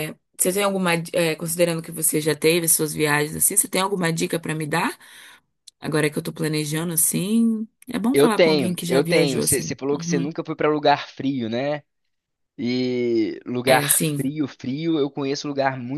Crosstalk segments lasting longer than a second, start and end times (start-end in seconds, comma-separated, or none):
8.1-10.3